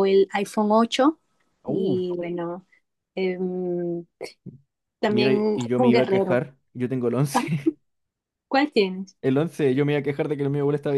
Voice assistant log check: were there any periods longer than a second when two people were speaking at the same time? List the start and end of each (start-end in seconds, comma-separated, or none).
5.1-6.4